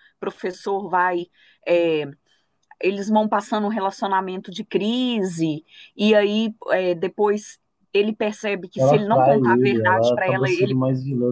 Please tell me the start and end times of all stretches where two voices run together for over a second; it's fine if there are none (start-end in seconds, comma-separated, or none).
8.8-10.8